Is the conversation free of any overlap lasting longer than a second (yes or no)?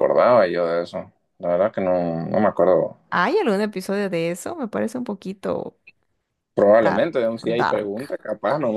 no